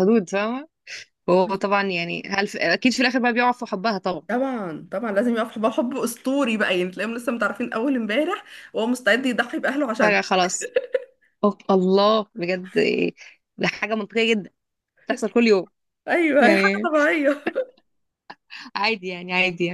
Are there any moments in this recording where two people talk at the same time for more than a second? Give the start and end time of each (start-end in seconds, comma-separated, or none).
none